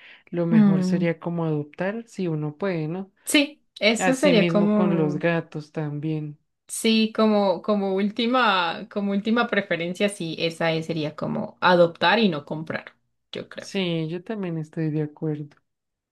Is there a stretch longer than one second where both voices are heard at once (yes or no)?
yes